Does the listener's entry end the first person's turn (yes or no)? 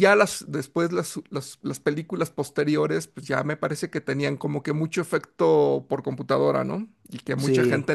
yes